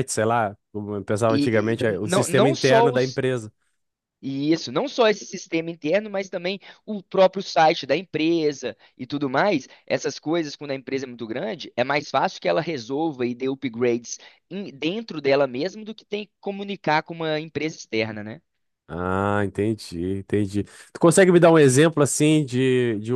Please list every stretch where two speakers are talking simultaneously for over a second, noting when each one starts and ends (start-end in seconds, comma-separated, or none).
1.3-3.2